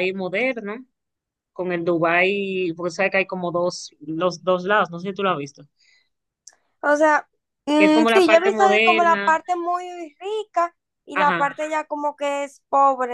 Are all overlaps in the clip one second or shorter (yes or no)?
no